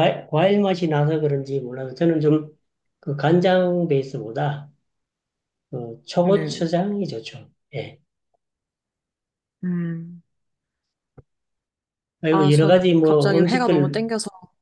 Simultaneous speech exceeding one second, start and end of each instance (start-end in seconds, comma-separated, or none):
12.3-14.0